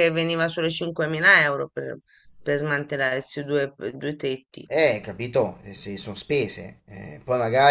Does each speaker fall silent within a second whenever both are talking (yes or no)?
yes